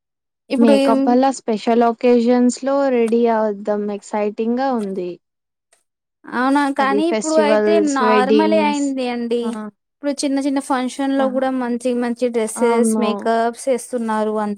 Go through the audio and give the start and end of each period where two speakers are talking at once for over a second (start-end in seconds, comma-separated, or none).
6.8-8.8